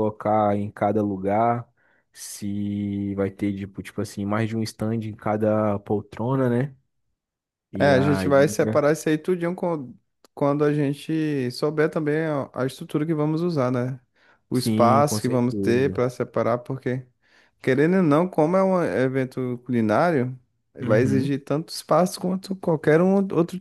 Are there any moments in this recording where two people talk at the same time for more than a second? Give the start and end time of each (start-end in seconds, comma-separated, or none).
14.5-16.0